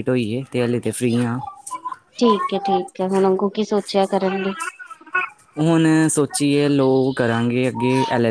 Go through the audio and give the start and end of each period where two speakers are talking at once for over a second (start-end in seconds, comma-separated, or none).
none